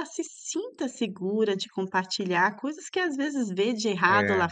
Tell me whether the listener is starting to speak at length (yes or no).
no